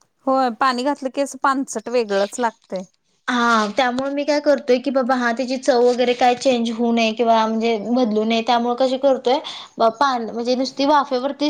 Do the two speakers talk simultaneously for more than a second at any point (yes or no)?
no